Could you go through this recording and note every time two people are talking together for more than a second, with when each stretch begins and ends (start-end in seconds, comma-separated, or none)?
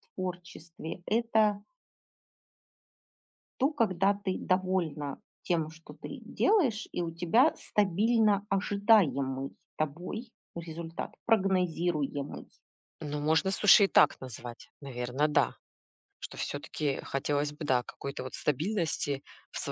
none